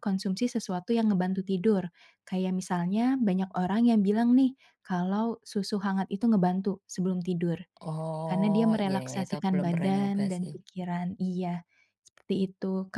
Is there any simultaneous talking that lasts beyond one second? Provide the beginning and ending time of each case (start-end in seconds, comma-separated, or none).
8.3-10.5